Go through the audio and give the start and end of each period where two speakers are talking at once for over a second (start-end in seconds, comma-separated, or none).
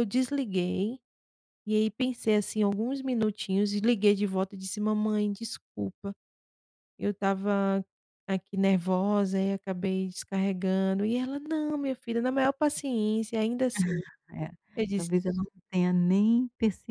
none